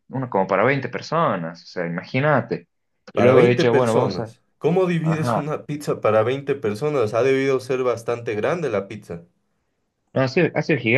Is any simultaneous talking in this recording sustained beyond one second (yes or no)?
yes